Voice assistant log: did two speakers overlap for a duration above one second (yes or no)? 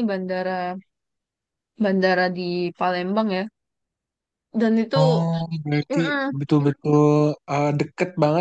no